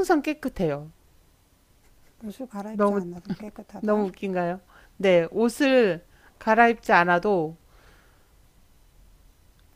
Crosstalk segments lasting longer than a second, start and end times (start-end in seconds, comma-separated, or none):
none